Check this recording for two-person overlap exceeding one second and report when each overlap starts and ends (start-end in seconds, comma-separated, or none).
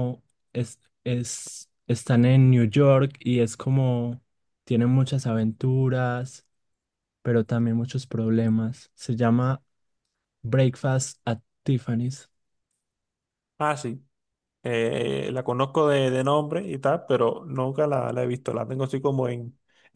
none